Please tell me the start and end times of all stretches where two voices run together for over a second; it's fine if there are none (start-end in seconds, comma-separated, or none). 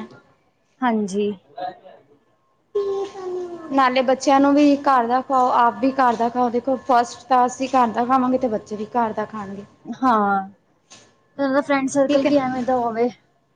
none